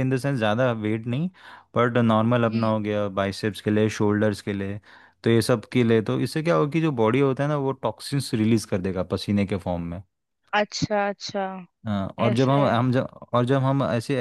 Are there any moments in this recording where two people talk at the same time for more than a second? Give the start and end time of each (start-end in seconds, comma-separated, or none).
none